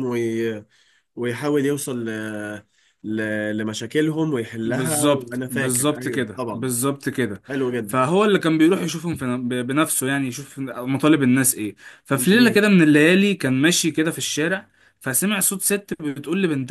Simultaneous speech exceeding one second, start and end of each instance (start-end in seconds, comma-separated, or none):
4.7-6.8